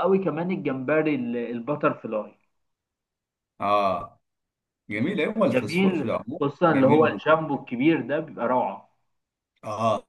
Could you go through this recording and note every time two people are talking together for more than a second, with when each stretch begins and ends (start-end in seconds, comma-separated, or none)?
5.5-7.4